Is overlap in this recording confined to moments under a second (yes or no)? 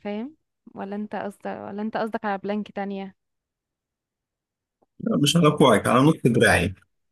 yes